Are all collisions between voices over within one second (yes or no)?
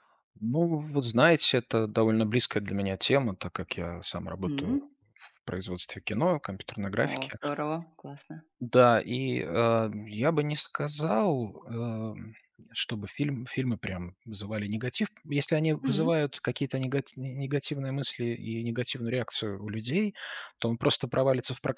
yes